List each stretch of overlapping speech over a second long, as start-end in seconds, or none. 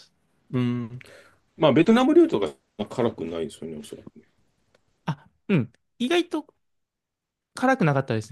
none